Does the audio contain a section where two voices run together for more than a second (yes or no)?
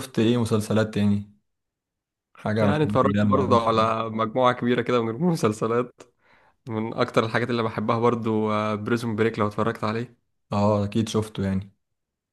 yes